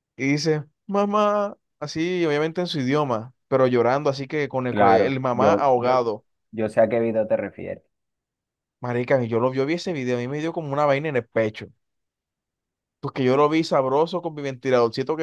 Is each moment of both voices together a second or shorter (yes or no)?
no